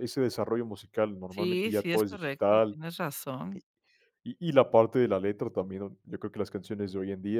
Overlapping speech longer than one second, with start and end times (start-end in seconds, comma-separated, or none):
1.3-2.8